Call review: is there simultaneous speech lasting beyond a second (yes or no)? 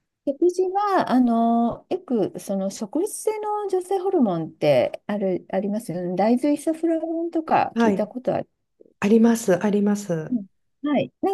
no